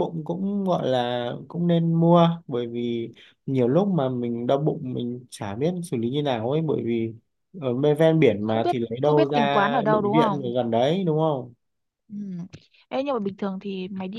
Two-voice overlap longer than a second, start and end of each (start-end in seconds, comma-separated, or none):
8.4-10.5